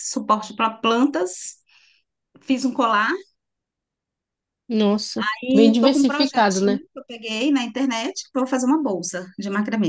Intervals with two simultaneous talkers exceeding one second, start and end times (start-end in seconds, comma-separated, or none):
5.4-6.8